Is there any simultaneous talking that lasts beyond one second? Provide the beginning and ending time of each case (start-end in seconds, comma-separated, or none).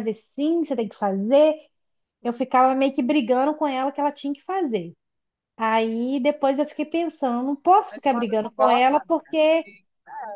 7.9-9.7